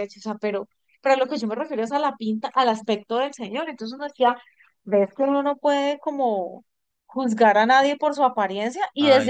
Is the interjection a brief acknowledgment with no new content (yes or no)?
yes